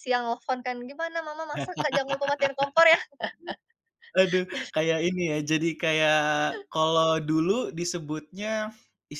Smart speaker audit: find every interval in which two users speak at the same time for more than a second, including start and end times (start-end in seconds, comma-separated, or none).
none